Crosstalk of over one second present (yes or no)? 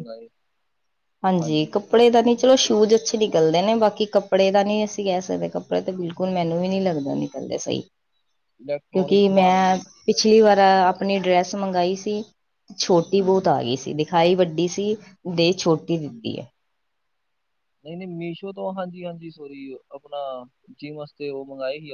yes